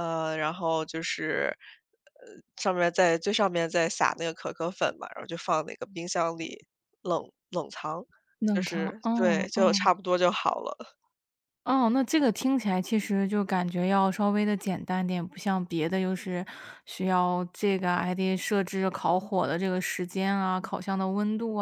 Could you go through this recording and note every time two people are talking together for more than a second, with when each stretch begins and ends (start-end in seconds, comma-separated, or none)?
8.5-9.9